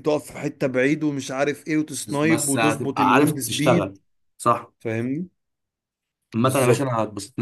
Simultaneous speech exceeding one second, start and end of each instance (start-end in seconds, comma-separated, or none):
2.1-4.0